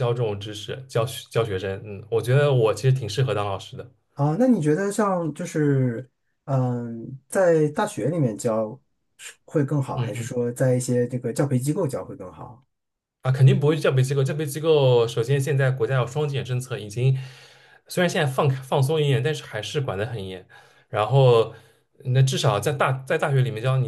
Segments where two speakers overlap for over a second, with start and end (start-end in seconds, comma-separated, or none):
none